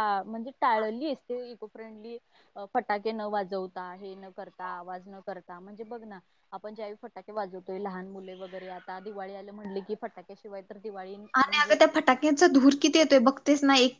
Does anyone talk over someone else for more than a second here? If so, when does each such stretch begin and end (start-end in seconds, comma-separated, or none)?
none